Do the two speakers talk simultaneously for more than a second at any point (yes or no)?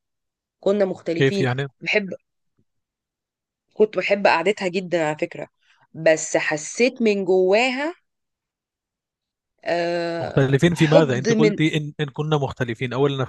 yes